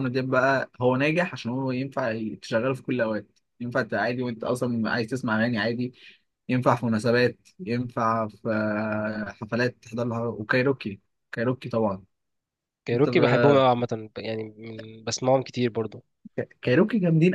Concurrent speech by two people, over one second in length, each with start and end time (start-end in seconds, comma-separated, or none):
none